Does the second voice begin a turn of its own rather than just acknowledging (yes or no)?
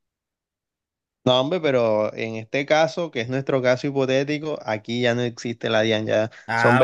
yes